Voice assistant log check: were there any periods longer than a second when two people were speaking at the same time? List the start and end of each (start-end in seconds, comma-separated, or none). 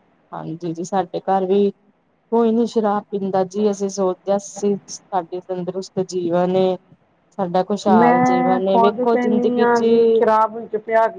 8.0-9.8